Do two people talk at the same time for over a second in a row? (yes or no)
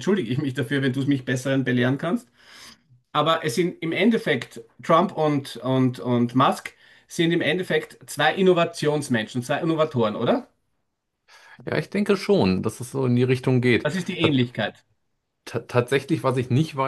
no